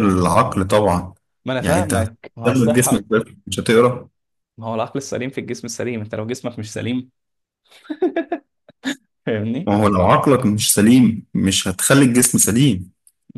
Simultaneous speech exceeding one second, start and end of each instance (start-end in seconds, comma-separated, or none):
1.6-3.1